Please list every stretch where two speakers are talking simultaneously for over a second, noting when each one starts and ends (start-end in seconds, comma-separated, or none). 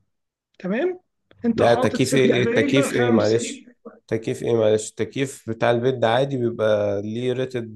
1.6-3.4